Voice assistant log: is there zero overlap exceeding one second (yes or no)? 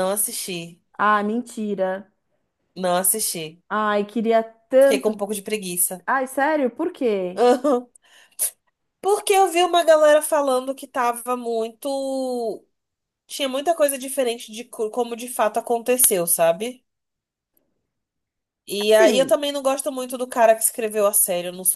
yes